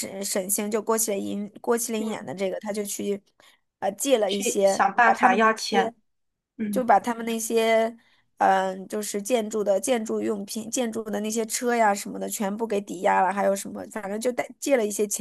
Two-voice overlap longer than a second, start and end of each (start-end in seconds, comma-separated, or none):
4.3-5.9